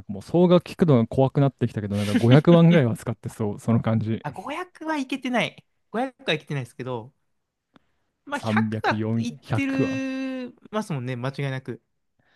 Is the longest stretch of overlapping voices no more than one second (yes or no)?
no